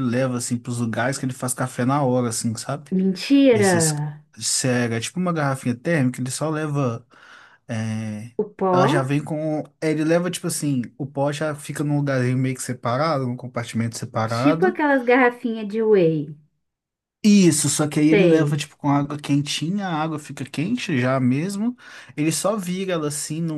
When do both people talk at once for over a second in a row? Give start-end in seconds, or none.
none